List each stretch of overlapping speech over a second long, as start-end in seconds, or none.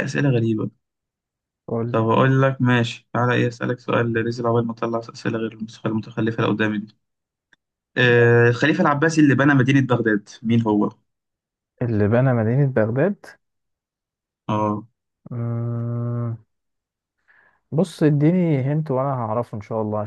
none